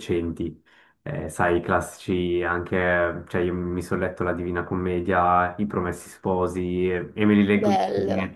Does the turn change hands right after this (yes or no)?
no